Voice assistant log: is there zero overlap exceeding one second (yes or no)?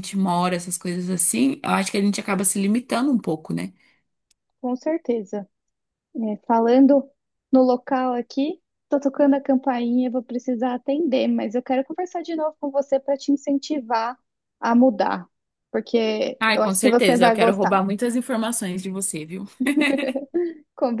no